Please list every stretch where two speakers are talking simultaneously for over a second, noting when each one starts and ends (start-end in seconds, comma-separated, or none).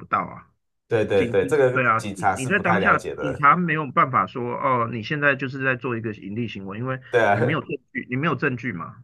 1.1-3.5